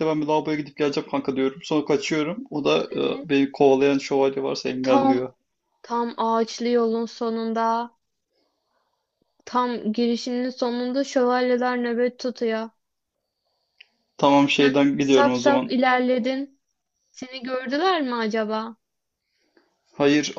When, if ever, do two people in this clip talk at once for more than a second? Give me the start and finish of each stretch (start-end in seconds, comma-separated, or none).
14.6-15.8